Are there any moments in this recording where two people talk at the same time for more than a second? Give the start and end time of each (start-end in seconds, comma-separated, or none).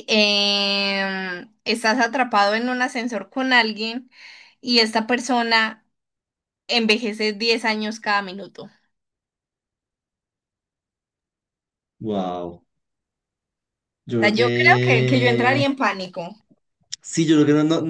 14.2-15.6